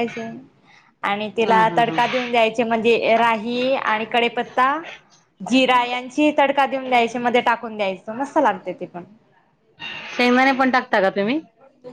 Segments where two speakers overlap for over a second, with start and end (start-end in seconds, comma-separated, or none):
none